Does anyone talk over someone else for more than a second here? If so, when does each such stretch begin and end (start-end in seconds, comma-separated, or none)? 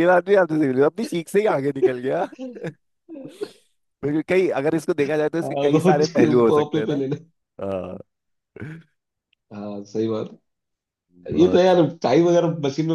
5.4-7.0